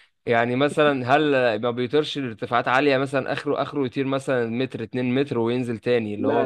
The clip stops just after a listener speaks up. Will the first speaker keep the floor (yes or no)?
no